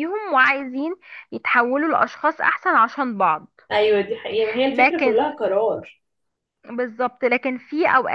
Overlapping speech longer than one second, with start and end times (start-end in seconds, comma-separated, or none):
none